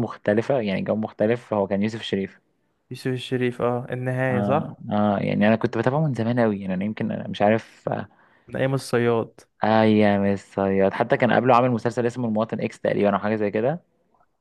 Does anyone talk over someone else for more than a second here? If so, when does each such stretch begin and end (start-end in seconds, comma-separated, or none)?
none